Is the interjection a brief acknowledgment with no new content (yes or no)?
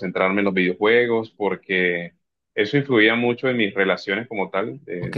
no